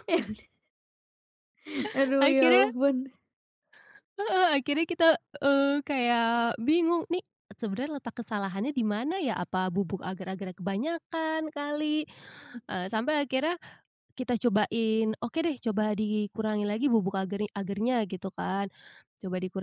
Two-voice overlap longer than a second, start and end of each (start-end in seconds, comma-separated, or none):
none